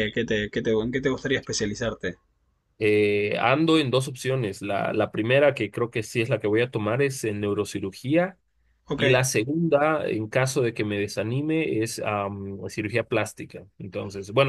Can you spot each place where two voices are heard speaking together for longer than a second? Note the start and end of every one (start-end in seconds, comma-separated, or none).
none